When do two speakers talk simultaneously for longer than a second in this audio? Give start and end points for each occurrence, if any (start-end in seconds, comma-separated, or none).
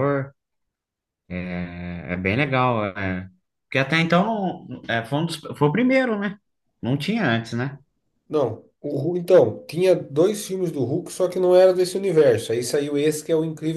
none